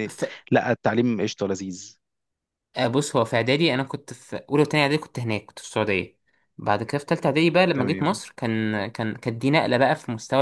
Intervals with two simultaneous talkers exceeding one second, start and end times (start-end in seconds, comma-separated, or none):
none